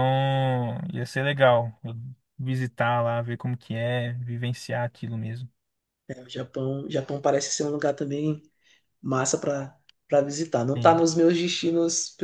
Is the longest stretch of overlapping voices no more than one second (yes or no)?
yes